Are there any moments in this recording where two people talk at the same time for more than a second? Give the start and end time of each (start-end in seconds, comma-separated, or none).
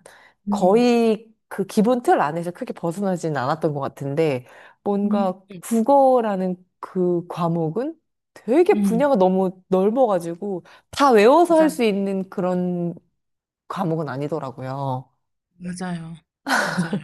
none